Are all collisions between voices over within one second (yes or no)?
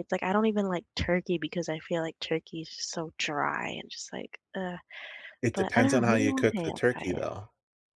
no